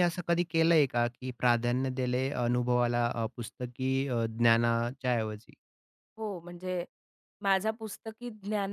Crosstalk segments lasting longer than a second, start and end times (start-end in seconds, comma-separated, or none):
none